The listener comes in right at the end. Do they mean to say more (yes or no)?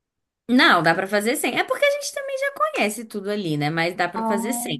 no